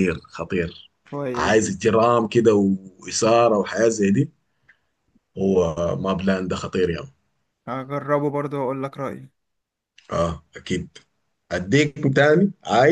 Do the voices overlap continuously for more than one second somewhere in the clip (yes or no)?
no